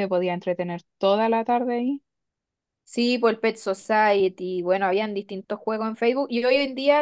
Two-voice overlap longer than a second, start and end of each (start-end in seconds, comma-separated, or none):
none